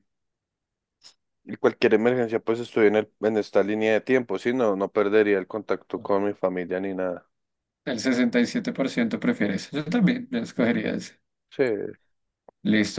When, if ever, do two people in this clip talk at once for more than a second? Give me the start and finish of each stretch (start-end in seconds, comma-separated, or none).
none